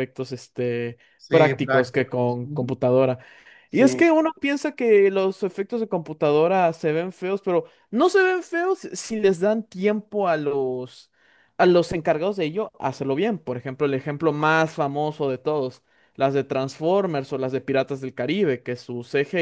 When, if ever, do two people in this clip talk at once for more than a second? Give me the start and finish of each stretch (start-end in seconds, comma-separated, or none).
1.2-2.8